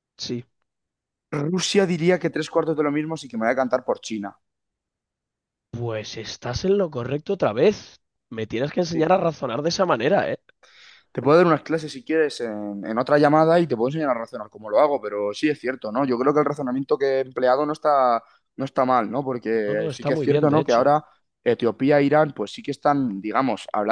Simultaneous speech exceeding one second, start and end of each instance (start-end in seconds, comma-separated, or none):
19.6-20.9